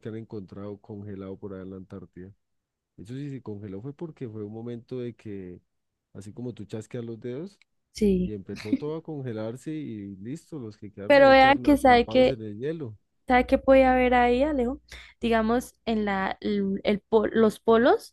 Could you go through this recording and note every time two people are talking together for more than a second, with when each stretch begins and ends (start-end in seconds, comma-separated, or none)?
11.1-12.4